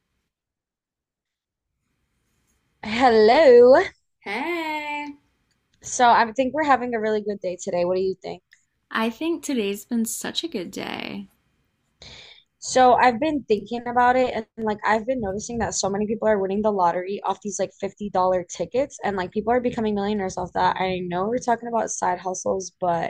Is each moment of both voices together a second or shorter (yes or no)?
yes